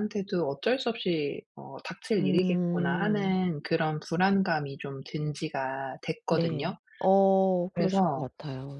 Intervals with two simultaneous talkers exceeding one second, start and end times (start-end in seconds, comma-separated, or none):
2.2-3.4